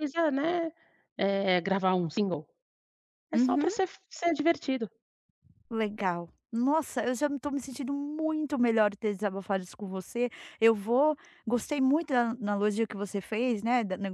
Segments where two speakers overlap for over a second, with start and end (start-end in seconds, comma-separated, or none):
none